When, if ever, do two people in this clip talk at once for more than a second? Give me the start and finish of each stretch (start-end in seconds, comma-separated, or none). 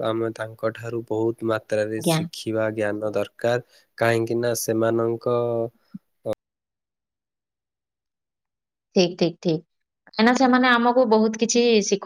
none